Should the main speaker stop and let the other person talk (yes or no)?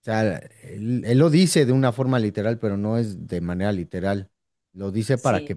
no